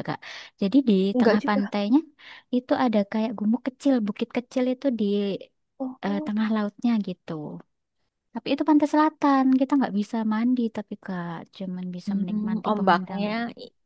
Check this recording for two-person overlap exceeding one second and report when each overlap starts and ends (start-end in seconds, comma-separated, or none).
12.1-13.3